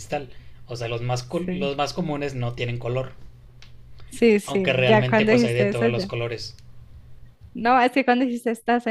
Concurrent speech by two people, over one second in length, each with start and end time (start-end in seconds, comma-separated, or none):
4.4-6.1